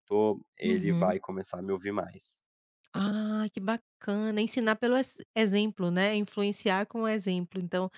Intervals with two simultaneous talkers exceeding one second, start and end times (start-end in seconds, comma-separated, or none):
none